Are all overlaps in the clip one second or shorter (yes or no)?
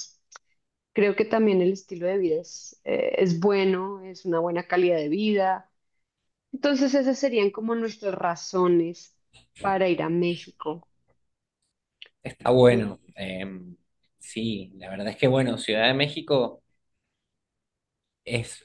yes